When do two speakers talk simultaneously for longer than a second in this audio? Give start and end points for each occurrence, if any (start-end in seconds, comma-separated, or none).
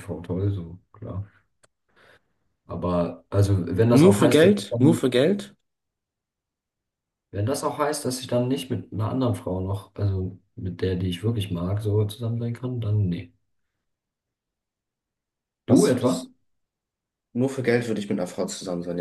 3.9-5.1